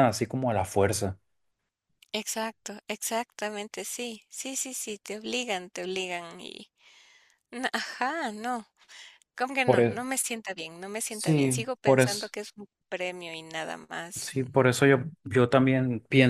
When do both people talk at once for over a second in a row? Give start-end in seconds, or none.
11.1-12.3